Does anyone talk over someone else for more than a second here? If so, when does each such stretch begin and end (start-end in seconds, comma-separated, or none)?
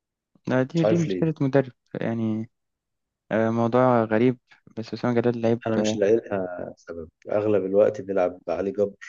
none